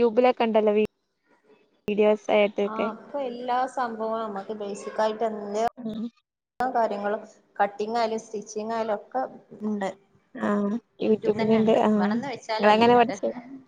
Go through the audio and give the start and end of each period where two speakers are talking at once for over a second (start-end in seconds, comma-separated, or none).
11.1-13.0